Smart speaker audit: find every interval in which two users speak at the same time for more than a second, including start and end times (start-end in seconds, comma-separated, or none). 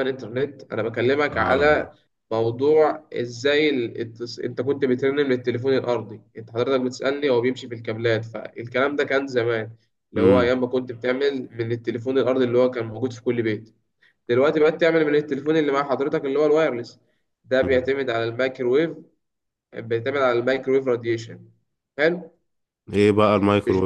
none